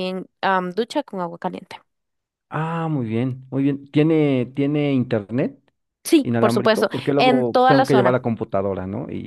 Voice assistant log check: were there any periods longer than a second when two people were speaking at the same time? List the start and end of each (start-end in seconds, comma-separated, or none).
6.2-8.2